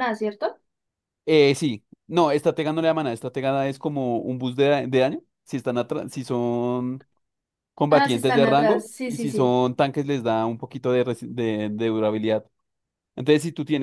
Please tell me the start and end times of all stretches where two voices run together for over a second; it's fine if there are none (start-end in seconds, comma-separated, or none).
7.9-9.6